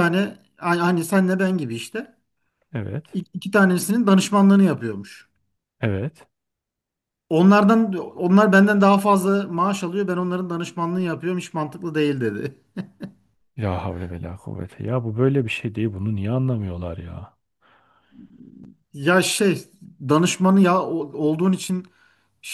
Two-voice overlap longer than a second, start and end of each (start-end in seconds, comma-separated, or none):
none